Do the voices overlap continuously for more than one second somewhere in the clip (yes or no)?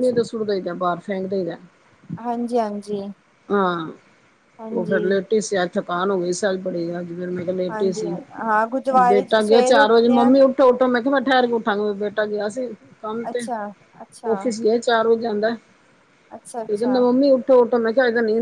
yes